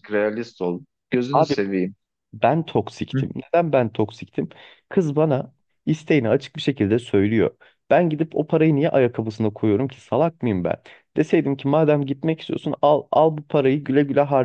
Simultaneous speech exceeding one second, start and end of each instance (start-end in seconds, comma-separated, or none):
none